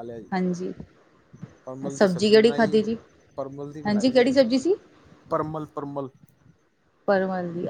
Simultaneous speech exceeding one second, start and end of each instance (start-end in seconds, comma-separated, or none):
none